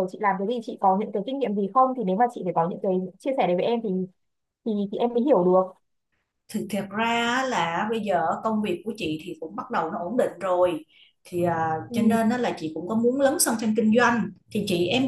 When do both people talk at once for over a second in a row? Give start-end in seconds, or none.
none